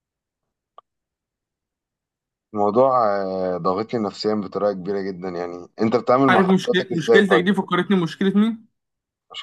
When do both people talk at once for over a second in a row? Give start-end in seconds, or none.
6.3-7.6